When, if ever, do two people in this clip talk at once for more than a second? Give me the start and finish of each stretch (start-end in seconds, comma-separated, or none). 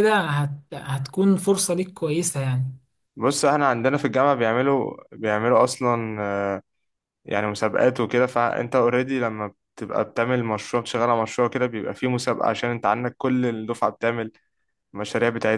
none